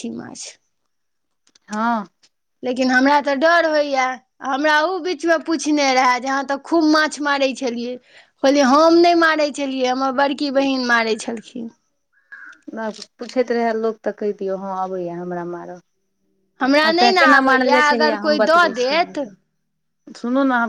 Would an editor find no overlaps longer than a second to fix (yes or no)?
no